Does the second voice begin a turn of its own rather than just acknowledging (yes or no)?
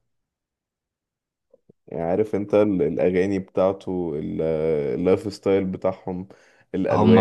yes